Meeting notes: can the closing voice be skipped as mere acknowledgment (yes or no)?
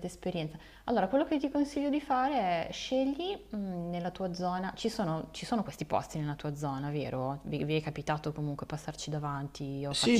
no